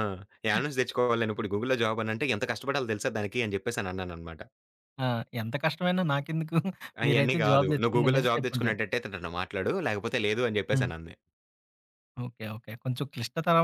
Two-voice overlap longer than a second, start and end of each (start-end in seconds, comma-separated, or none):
7.1-8.8